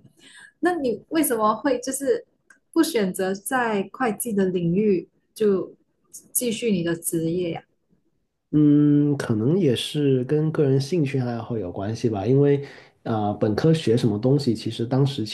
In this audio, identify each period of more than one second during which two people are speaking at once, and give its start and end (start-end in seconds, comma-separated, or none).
none